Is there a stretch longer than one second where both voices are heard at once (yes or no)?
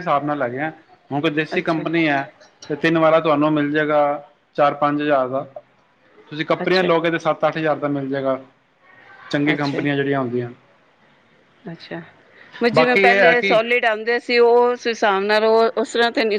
no